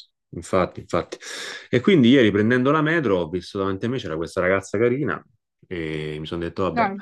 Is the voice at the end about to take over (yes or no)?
no